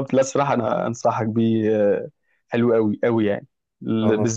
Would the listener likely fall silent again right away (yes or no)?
yes